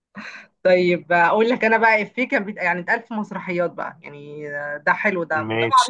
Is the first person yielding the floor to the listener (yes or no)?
no